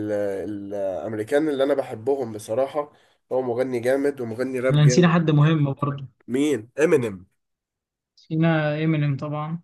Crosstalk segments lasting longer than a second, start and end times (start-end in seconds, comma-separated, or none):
none